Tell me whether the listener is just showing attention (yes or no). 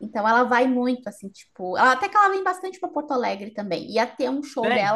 yes